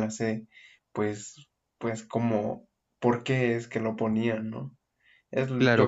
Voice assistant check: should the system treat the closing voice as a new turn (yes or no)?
yes